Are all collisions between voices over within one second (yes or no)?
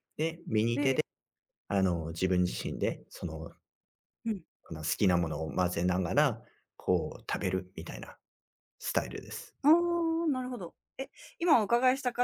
yes